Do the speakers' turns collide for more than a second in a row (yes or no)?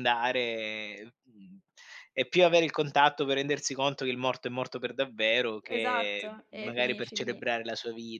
yes